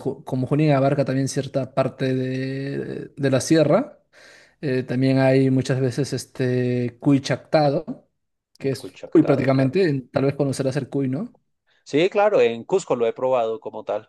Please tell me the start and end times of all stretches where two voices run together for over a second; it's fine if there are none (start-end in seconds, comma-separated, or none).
8.6-9.8